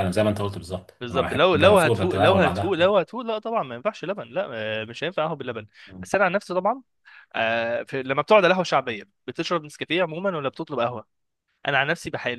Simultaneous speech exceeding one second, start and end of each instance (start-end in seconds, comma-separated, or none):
1.0-2.8